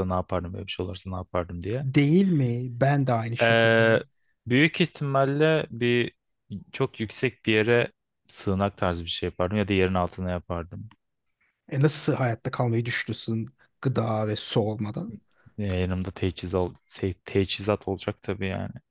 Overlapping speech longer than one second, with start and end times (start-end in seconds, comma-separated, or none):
none